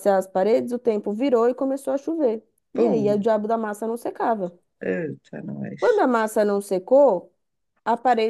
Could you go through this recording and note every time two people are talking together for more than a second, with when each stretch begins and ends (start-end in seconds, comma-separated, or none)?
none